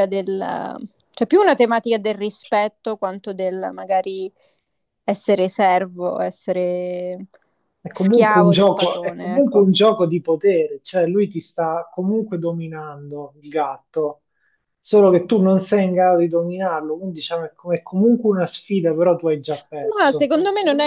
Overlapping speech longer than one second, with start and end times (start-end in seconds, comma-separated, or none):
7.9-9.7